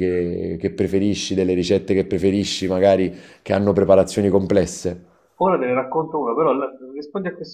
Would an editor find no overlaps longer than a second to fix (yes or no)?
yes